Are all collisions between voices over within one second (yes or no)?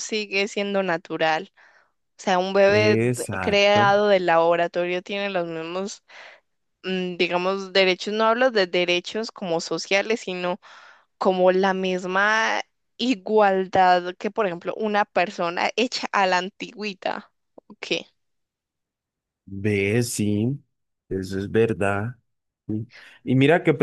no